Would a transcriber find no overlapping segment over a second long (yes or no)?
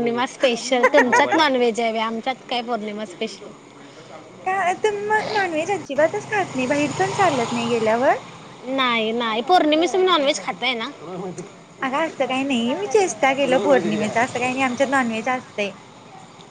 yes